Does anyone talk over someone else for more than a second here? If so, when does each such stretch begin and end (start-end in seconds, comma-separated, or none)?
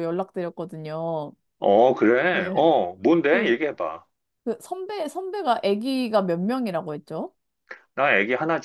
none